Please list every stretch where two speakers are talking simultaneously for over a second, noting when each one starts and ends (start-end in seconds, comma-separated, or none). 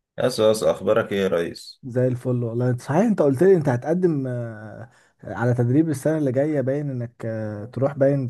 none